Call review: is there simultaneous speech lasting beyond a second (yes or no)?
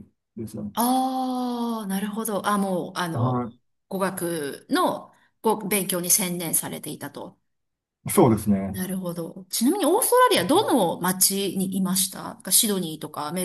no